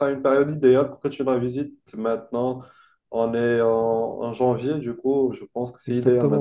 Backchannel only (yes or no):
no